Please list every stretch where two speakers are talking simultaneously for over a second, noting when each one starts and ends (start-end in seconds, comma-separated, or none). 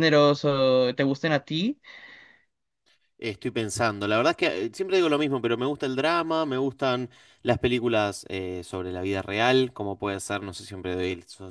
none